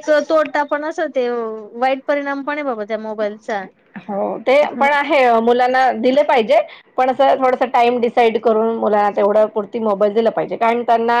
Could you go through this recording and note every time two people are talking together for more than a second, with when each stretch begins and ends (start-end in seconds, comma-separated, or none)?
none